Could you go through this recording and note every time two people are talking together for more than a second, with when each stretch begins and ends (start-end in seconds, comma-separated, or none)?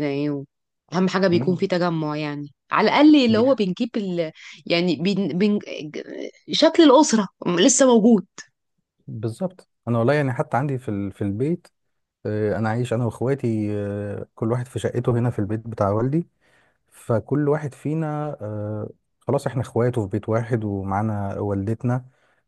none